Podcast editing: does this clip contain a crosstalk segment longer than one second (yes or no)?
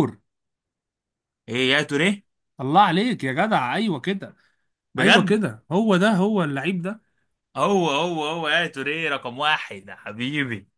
no